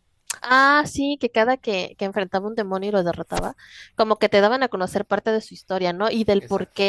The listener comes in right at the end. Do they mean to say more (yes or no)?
no